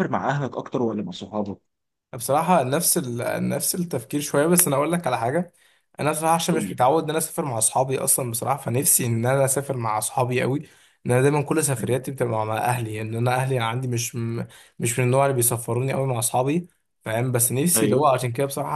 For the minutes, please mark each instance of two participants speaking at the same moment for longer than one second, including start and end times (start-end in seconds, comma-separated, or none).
none